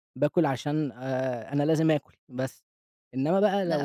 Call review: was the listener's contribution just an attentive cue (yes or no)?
yes